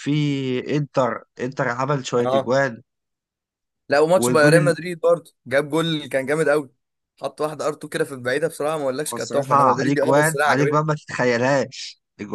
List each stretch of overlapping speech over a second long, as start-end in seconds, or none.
9.1-10.8